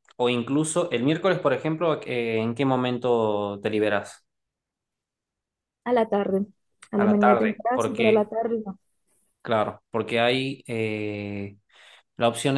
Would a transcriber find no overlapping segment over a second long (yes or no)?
no